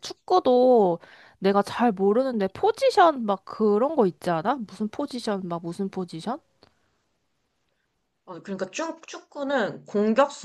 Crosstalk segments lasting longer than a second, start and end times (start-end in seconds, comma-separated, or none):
none